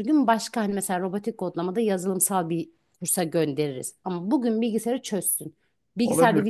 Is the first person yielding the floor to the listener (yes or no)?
yes